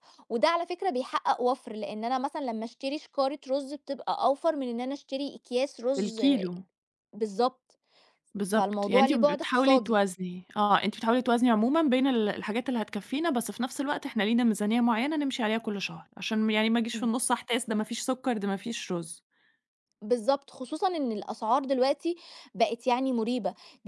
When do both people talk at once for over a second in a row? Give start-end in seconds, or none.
8.5-10.0